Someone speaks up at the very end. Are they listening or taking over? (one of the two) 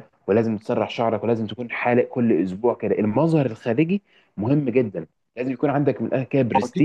taking over